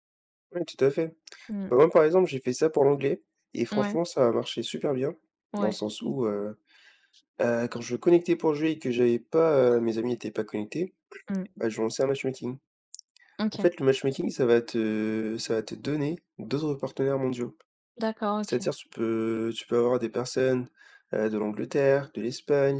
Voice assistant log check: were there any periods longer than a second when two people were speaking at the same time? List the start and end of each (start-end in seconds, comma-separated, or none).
none